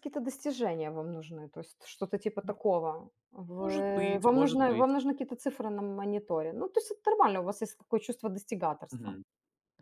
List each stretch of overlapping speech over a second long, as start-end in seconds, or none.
3.6-4.9